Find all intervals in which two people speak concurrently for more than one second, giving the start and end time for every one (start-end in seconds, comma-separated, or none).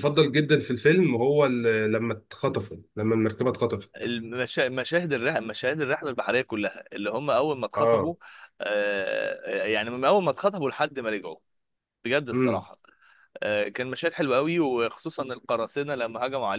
none